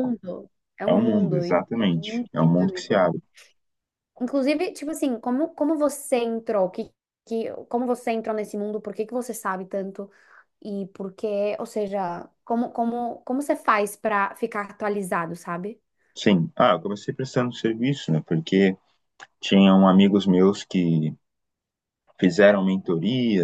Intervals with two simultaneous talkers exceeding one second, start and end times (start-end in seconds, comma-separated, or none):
0.9-3.1